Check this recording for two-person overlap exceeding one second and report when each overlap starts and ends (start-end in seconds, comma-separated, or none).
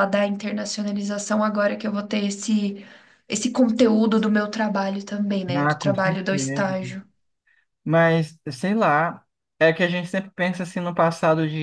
5.5-6.8